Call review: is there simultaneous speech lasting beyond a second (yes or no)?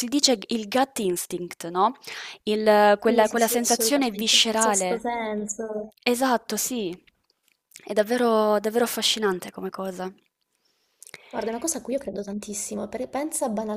yes